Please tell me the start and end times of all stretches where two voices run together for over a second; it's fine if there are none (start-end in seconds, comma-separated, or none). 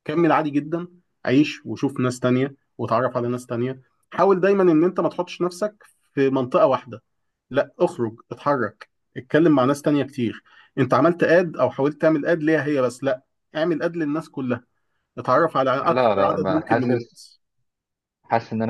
15.8-17.2